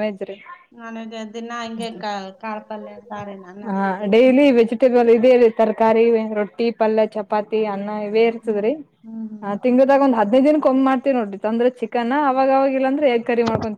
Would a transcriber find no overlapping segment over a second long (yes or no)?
yes